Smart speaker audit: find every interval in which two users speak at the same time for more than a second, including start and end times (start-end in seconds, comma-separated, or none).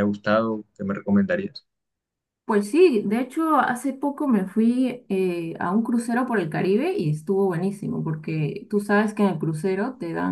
none